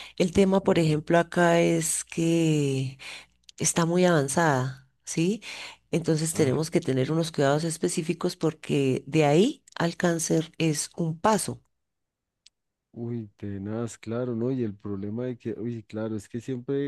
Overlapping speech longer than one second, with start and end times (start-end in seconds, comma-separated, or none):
none